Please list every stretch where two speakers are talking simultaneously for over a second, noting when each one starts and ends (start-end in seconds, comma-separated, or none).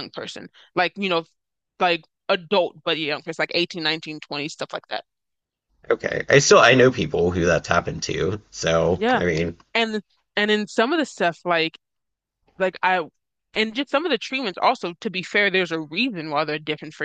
none